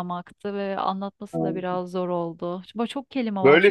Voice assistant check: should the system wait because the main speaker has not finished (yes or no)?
no